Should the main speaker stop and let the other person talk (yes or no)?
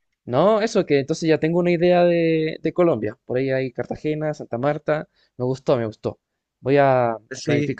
no